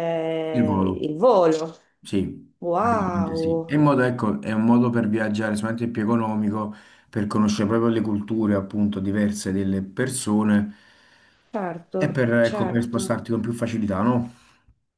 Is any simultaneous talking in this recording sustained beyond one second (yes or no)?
yes